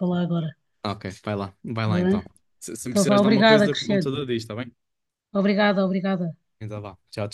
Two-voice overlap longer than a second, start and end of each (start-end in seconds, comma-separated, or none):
2.9-4.1